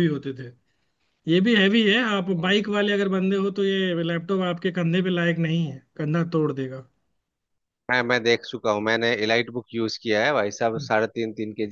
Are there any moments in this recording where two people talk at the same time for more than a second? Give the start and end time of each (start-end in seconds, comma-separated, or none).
none